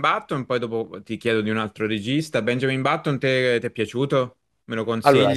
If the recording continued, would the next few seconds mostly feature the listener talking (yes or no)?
no